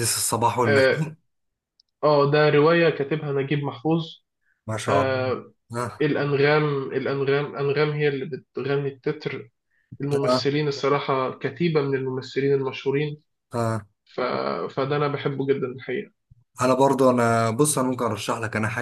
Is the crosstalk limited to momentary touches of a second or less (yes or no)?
yes